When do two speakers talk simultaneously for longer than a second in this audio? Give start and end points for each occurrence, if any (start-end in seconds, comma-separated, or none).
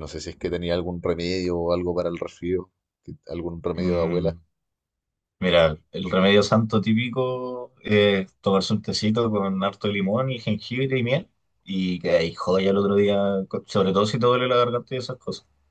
none